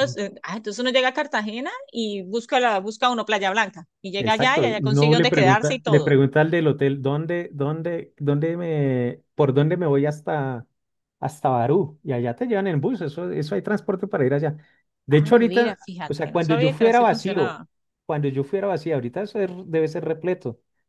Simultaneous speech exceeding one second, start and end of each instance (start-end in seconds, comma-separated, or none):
4.2-6.2, 15.1-17.6